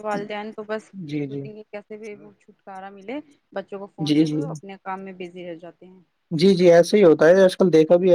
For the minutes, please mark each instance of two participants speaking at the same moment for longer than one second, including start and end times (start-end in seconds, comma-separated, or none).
none